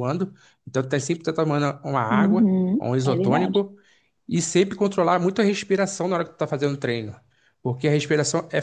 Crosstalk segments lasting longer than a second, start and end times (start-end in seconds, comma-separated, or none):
2.1-3.6